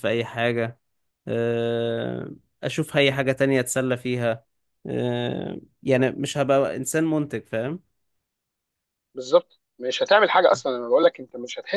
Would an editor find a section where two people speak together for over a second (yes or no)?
no